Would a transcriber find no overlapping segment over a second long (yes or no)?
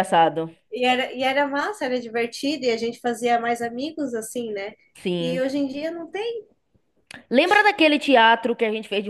yes